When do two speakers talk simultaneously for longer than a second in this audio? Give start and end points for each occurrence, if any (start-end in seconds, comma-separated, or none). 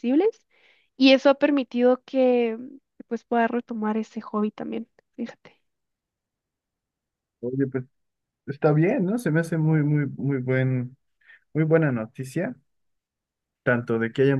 none